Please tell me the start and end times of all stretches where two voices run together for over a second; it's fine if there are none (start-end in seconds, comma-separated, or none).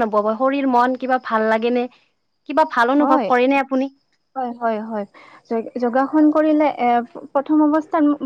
none